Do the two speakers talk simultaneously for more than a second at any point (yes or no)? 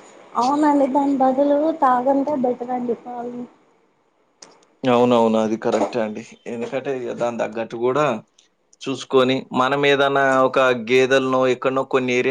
no